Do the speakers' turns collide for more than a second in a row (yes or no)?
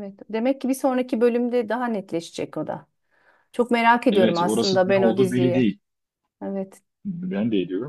yes